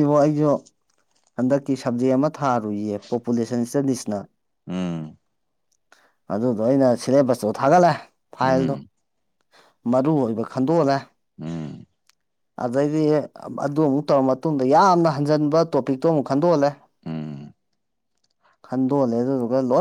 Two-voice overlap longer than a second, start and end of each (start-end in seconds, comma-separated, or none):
none